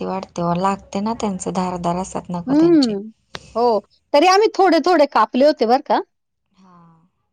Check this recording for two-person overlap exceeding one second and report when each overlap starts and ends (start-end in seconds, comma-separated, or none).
none